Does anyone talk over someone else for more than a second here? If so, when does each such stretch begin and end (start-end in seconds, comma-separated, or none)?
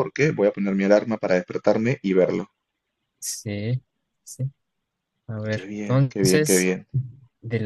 5.5-6.7